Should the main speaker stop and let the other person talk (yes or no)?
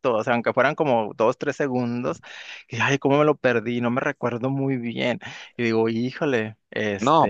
yes